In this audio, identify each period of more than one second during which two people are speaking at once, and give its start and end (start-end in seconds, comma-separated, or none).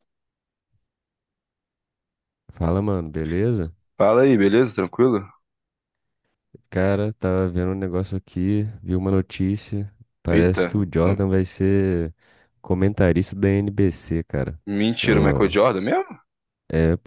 none